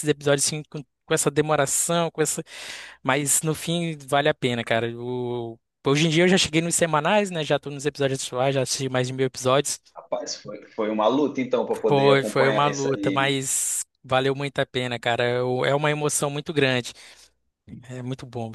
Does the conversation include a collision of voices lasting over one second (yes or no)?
yes